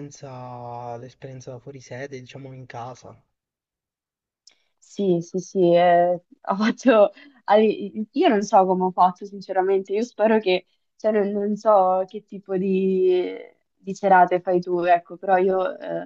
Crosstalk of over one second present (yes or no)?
no